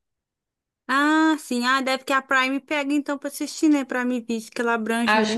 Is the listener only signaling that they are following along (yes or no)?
no